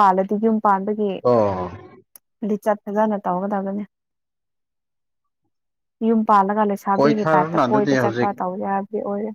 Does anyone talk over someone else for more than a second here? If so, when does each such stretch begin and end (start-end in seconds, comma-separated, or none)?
6.9-8.3